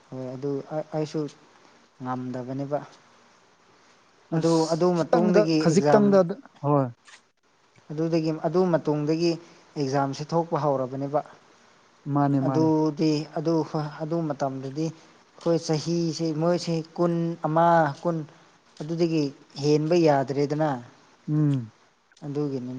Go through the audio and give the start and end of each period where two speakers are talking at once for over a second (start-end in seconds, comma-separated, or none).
4.4-6.0